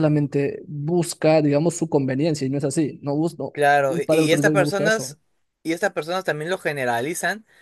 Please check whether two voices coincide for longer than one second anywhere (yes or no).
yes